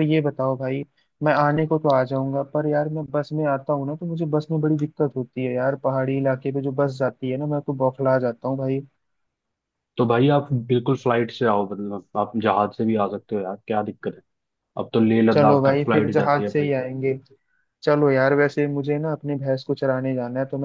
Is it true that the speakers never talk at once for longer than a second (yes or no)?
no